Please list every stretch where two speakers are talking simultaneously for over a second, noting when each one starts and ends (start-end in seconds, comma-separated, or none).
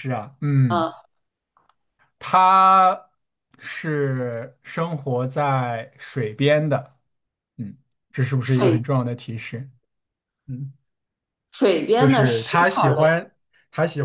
12.0-13.2